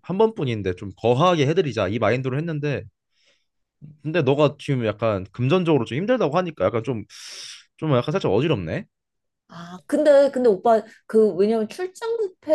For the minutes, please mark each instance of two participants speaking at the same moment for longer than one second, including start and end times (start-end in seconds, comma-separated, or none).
none